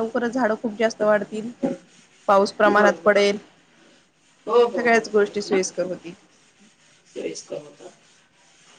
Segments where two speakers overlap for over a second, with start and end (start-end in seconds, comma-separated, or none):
none